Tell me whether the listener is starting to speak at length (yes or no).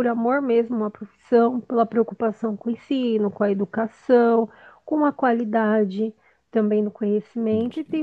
no